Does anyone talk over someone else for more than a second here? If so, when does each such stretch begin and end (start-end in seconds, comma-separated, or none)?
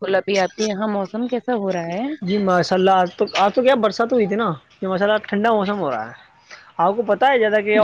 none